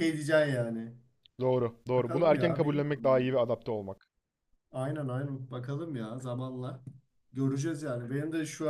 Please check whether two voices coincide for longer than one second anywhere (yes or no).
yes